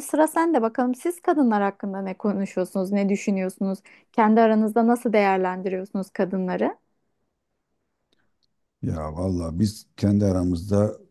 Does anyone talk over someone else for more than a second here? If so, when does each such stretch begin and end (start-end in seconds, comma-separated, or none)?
none